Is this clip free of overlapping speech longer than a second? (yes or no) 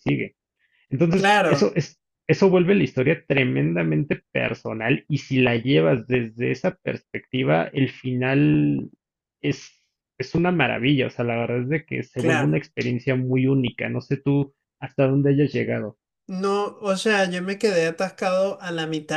yes